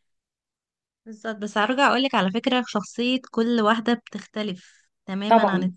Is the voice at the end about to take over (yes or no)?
no